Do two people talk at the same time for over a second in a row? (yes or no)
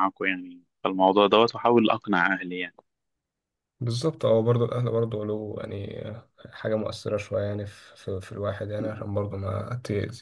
no